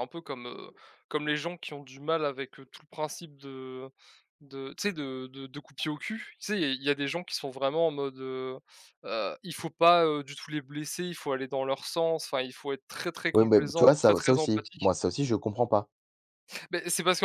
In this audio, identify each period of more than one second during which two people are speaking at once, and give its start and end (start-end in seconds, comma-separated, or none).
13.3-14.9